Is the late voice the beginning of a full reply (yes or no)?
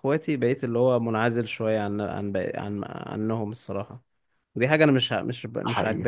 no